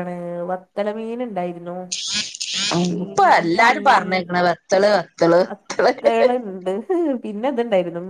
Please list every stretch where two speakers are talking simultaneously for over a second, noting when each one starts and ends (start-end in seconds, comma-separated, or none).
none